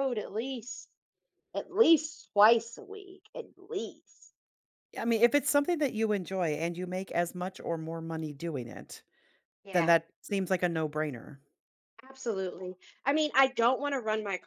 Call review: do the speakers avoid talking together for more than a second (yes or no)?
yes